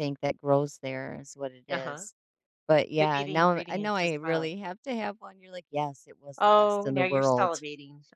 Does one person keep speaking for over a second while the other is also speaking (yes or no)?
yes